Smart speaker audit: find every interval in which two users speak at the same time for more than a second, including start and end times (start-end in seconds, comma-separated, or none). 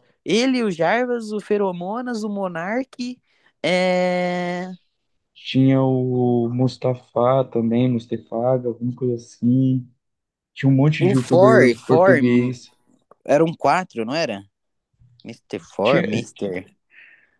11.0-12.2